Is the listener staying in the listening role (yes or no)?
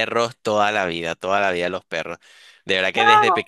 yes